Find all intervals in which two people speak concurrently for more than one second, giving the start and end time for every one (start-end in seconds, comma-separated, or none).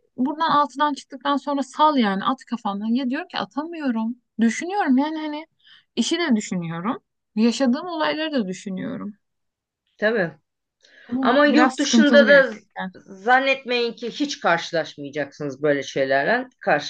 11.2-12.9